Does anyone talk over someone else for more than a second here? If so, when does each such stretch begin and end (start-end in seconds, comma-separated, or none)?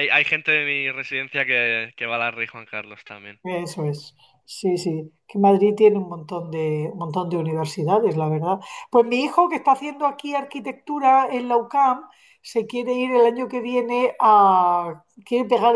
none